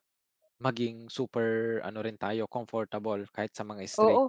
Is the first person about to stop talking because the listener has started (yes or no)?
yes